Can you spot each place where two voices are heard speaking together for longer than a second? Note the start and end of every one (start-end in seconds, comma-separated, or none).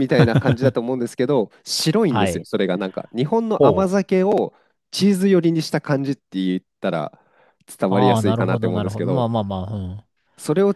7.9-9.3